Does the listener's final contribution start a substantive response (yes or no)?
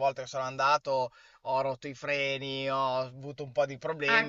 yes